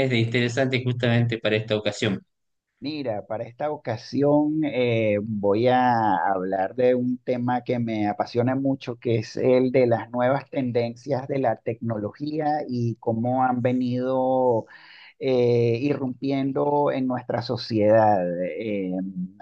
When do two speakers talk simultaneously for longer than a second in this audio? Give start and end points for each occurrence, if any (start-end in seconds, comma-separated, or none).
none